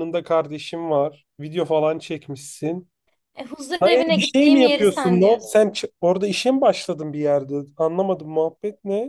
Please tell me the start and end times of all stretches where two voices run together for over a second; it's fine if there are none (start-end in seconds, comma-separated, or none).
3.8-5.6